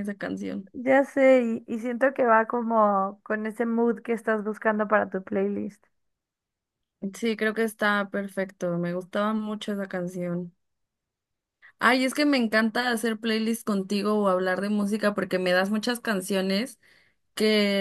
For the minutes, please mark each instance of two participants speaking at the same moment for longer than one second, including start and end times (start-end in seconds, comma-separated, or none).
none